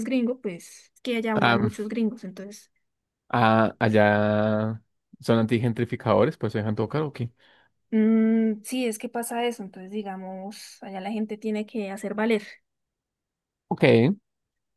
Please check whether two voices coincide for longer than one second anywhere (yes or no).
no